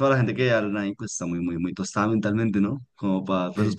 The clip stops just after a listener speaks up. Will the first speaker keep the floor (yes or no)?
no